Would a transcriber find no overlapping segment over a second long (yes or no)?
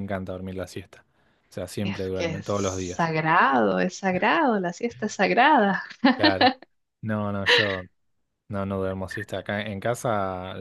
no